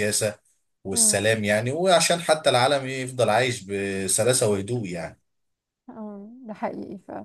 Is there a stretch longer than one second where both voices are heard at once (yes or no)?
no